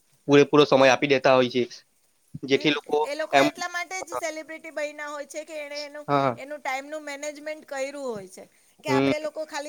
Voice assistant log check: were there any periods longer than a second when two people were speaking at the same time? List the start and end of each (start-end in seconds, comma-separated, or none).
none